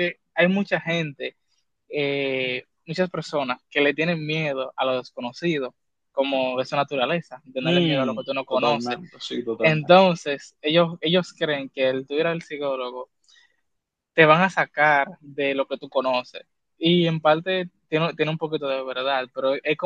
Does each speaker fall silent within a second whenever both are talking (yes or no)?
no